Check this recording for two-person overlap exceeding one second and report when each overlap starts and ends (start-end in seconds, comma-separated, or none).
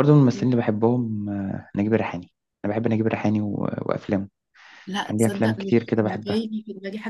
5.0-6.5